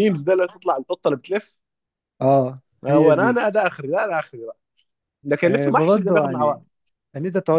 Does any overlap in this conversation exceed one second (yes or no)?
yes